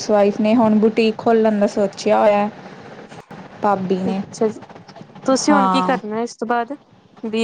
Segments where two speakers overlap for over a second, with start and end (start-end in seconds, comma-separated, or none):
none